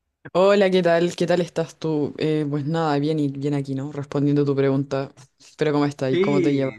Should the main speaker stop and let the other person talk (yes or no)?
yes